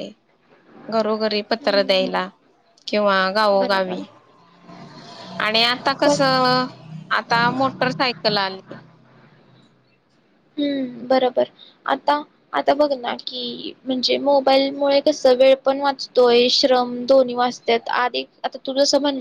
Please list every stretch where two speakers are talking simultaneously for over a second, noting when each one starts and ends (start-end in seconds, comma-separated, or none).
none